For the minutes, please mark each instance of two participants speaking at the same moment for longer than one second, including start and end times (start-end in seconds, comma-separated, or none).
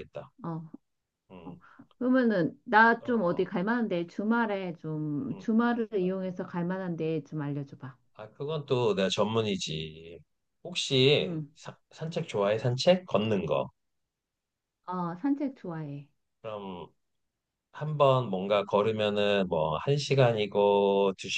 none